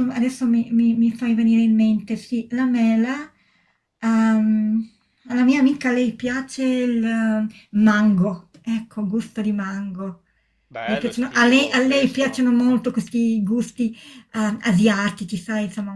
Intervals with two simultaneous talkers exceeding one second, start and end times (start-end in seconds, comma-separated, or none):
10.8-12.5